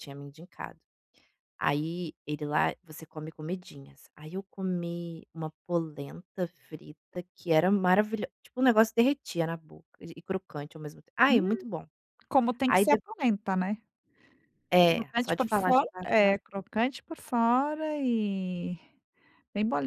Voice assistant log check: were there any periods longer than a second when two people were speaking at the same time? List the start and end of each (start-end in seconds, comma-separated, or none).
14.9-16.6